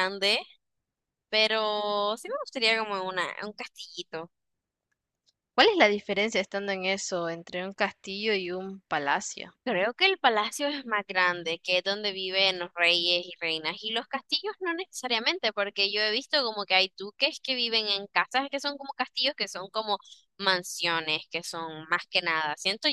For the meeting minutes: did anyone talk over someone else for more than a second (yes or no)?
no